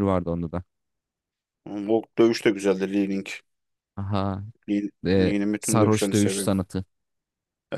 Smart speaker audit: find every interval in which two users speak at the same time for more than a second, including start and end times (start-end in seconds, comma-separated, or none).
5.1-6.5